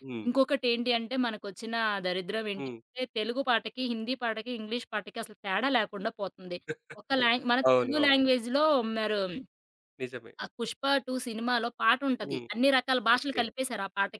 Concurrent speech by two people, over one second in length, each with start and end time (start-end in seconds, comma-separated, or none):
none